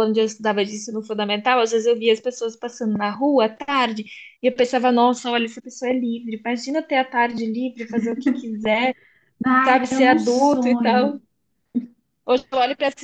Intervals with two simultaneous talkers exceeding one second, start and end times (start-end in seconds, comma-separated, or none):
9.6-11.2